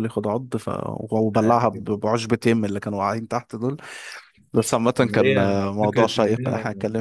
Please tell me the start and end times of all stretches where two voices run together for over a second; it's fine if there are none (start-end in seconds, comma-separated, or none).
5.0-6.5